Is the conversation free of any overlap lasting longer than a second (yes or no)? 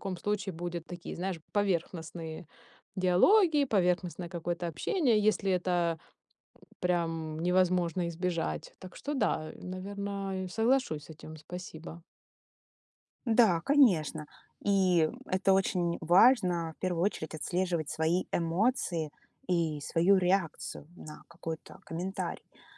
yes